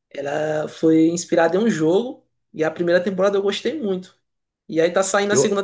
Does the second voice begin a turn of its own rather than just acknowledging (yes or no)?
no